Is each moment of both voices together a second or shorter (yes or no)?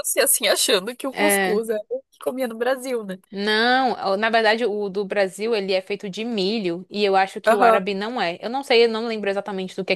yes